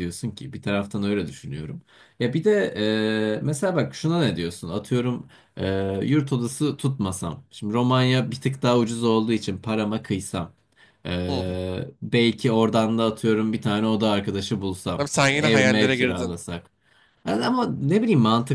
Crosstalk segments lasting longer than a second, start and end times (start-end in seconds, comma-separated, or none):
15.0-16.4